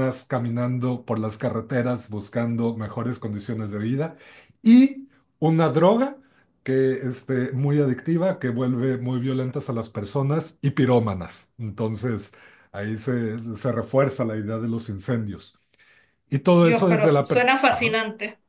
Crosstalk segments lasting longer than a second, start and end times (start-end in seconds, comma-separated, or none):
16.6-18.0